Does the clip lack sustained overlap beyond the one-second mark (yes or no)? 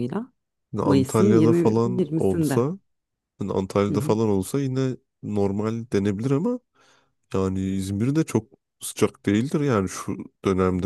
no